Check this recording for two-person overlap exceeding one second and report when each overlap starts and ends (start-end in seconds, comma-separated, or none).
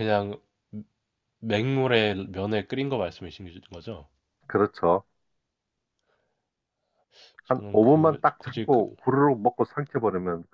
7.5-8.8